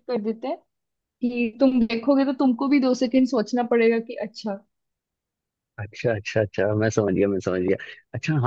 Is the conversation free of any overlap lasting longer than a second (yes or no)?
yes